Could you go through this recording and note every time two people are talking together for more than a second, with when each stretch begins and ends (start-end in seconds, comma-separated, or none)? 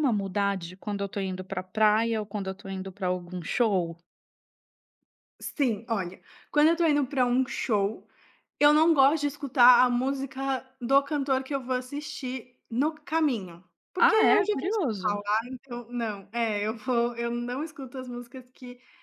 14.0-15.2